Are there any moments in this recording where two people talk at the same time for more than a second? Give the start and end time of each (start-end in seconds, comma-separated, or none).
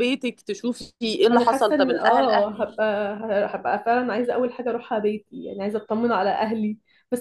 1.3-2.8